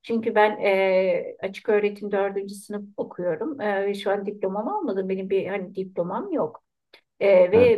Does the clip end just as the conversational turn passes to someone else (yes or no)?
no